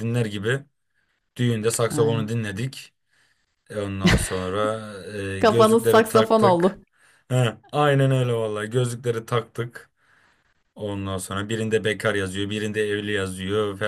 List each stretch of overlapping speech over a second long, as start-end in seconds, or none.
5.4-6.8